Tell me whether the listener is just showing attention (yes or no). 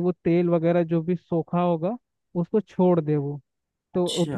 yes